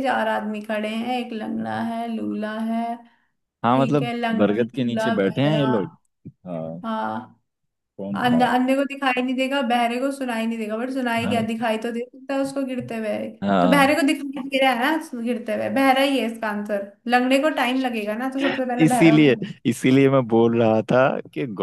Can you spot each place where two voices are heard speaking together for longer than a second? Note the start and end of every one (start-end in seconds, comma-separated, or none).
3.7-5.7